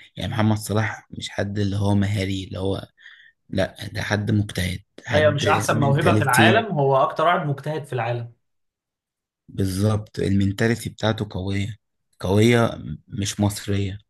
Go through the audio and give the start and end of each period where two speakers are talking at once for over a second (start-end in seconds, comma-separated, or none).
5.1-6.7